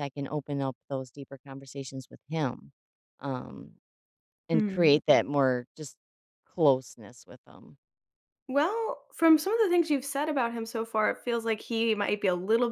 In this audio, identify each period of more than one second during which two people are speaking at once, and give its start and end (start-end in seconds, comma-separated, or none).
none